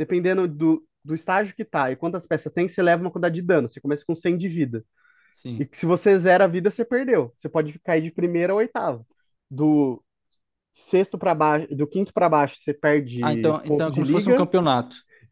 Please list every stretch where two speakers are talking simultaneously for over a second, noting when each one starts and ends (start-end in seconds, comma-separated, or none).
13.2-14.5